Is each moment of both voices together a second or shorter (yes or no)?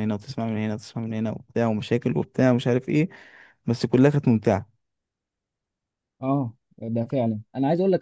yes